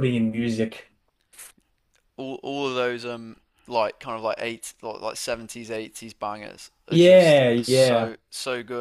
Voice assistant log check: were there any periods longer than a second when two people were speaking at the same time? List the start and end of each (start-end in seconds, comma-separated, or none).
6.9-8.2